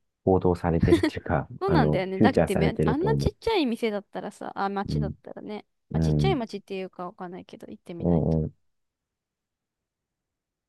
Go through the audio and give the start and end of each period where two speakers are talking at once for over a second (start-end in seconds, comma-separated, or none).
1.6-3.4